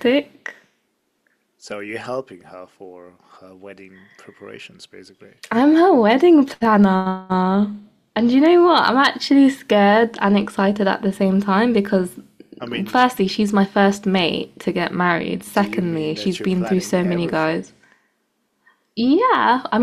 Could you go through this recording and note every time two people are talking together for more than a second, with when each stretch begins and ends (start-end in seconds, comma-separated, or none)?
15.5-17.7